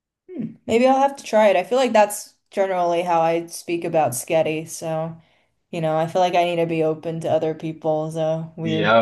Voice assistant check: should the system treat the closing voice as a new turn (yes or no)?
yes